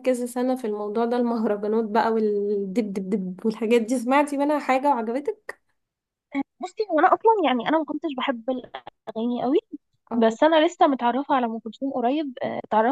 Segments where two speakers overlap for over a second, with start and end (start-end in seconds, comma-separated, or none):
none